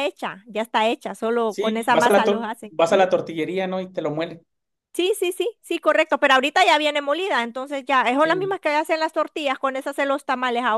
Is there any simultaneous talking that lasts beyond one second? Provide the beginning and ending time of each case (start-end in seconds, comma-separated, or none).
1.4-3.0